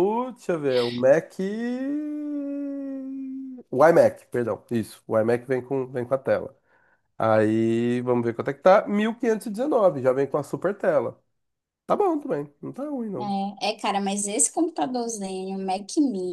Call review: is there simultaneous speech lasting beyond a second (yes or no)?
no